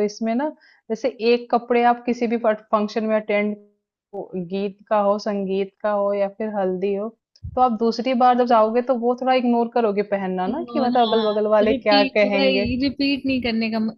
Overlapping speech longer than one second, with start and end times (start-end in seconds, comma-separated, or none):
10.7-12.7